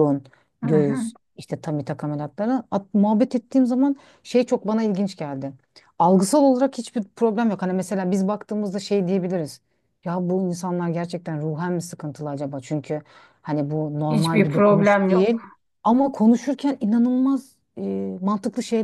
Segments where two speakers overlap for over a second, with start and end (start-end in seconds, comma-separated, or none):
14.1-15.4